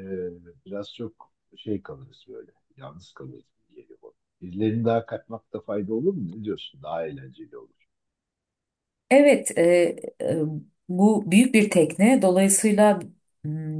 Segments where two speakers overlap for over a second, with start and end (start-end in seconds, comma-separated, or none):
none